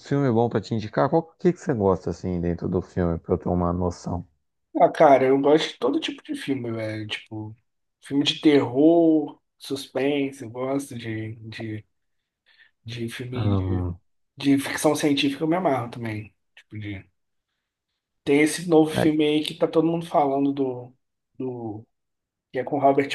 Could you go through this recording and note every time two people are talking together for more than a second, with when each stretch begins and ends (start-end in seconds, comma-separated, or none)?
none